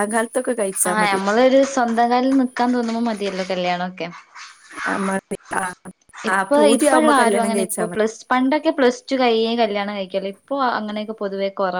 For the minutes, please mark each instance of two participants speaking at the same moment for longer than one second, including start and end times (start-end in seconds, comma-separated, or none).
6.3-8.0